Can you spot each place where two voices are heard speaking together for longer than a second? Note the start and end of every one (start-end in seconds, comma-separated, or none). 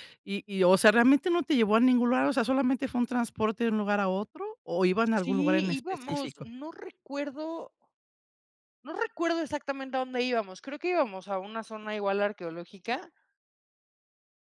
5.2-6.5